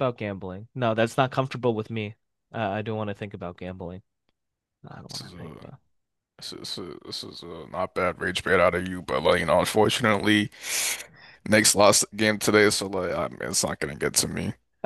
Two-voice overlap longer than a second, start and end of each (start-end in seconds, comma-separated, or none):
none